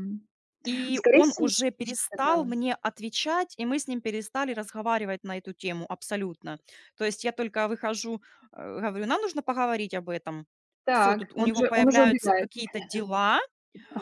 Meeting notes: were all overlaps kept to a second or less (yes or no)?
no